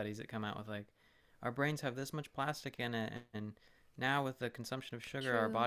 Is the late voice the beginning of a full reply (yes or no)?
no